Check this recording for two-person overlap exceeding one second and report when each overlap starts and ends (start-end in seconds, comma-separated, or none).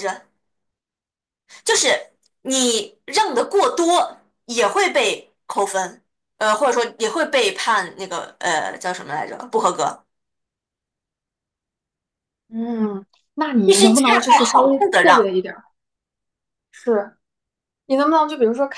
13.6-15.3